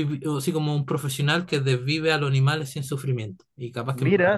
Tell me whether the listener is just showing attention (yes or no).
no